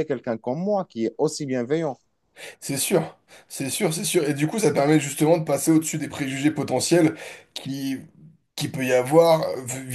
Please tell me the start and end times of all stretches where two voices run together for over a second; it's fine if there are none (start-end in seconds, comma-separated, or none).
none